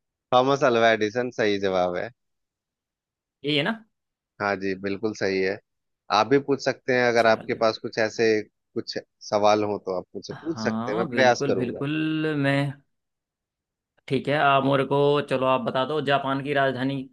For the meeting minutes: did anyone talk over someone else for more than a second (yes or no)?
yes